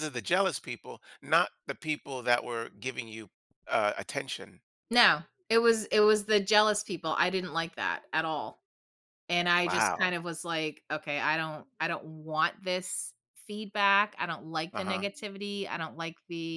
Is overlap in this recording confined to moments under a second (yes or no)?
yes